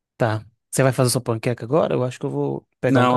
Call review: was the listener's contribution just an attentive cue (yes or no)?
no